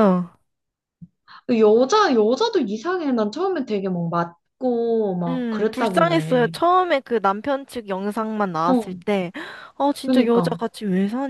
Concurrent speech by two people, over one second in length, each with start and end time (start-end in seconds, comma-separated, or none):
5.3-6.5